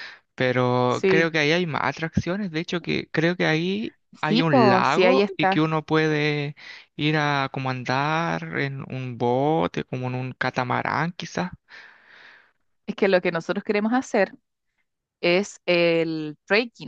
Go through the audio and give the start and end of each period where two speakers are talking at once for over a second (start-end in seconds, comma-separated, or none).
4.3-5.7